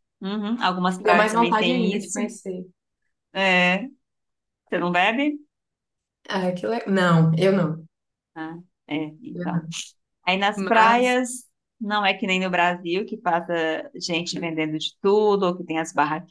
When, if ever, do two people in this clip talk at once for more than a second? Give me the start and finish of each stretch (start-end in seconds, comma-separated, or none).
1.0-2.2